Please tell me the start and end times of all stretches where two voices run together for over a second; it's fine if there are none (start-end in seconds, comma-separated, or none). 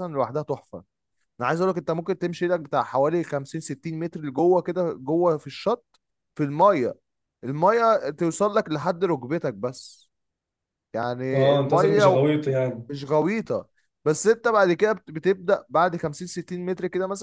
11.3-12.9